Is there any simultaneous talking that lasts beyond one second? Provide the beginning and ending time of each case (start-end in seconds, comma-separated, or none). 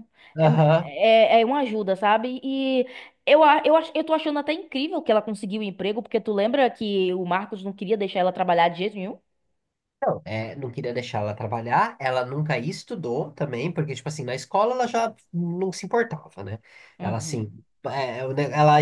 none